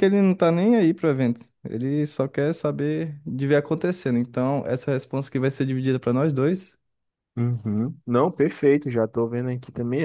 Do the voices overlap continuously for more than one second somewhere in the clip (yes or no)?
no